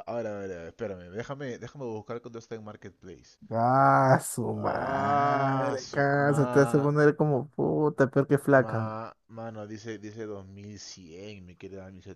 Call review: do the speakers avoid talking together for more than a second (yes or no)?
no